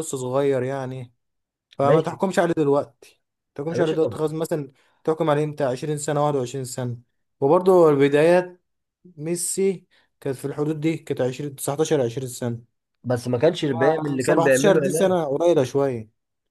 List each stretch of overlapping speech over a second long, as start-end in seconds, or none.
13.8-15.2